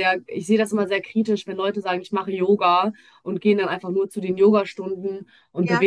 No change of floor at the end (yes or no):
yes